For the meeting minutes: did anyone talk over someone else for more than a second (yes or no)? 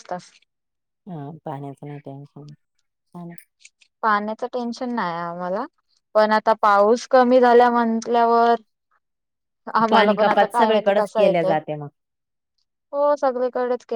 yes